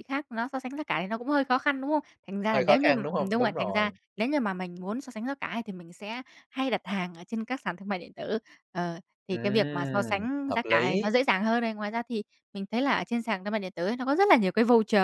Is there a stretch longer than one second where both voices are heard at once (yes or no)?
yes